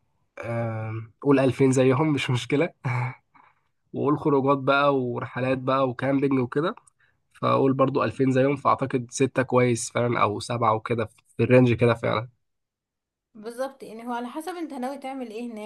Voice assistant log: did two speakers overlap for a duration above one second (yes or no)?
no